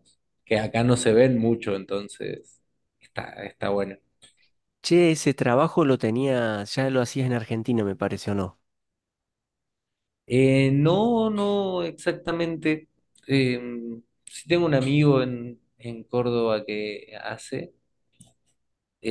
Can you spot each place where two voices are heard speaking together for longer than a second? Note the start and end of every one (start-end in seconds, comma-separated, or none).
none